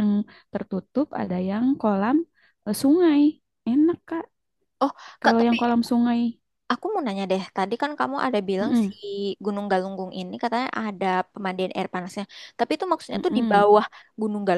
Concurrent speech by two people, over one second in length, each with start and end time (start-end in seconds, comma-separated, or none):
none